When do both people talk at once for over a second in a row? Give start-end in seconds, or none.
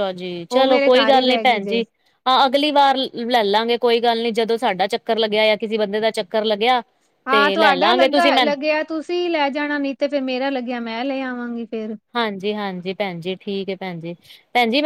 7.3-8.5